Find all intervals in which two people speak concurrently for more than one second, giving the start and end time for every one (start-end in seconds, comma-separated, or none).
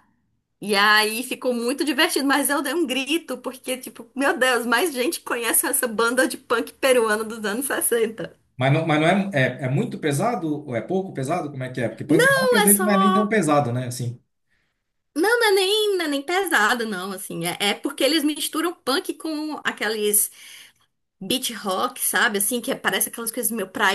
12.1-13.3